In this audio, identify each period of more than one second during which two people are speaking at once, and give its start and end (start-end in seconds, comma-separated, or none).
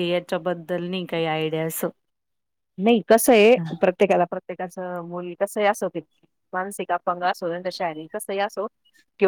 none